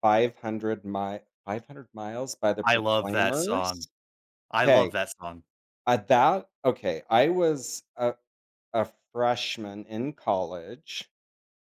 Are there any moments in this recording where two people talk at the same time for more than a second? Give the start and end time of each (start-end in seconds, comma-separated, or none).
2.6-3.9